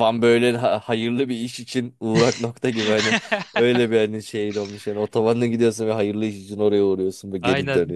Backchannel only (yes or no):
no